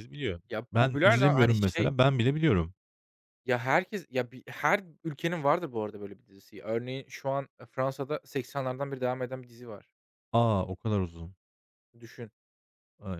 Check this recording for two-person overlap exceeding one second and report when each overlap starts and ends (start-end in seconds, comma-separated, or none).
0.5-1.9